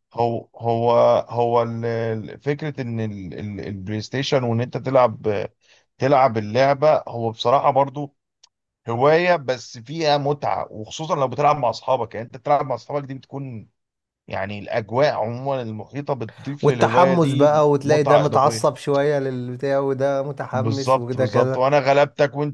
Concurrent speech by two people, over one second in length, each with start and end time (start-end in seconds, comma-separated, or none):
16.6-18.7, 20.5-21.8